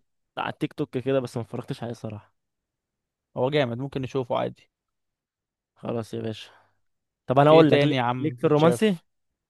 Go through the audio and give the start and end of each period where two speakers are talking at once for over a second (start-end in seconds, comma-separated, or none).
7.5-9.0